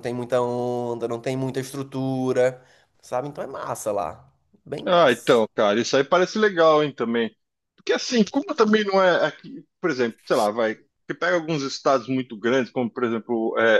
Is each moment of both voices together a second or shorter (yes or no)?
yes